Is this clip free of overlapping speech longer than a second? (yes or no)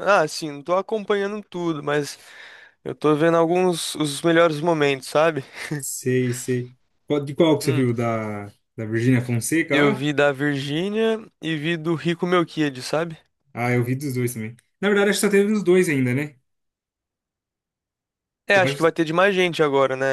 yes